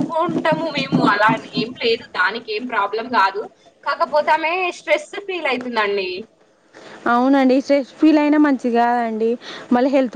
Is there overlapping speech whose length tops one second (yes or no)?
no